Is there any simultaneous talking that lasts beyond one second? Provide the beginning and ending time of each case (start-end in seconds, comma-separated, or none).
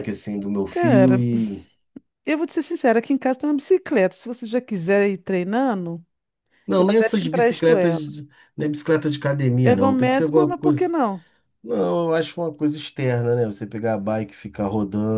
6.8-8.0, 9.6-10.9